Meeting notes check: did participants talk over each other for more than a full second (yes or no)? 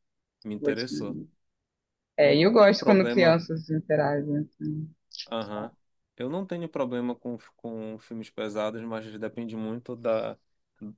yes